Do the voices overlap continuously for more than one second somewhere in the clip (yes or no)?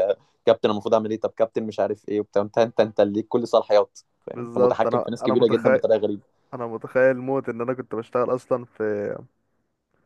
yes